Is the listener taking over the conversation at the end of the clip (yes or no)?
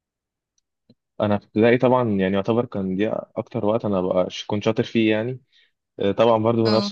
no